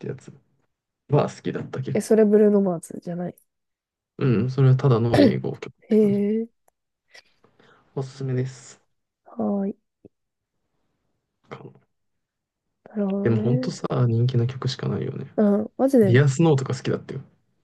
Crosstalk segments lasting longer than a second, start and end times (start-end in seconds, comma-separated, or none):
none